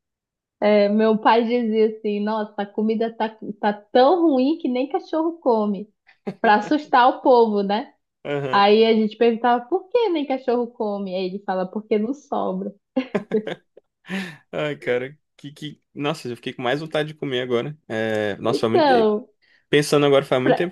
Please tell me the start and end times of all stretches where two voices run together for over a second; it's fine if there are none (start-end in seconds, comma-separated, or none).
none